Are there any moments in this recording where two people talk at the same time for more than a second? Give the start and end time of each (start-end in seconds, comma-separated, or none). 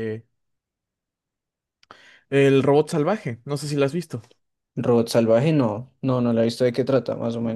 none